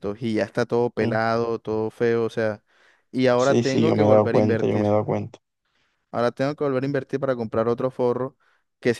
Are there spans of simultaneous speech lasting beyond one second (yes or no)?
yes